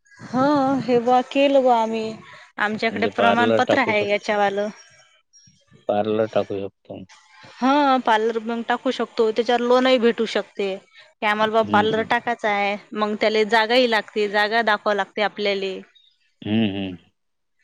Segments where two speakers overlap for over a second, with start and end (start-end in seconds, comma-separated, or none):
2.9-4.3